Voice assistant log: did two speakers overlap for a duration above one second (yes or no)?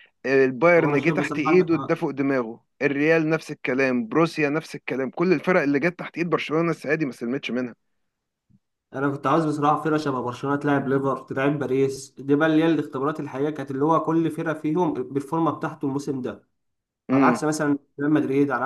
yes